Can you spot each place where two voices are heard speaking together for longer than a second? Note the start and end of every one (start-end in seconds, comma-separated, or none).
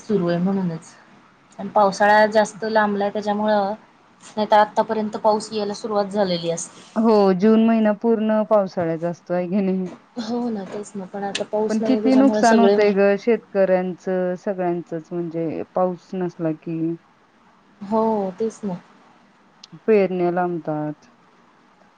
11.7-12.9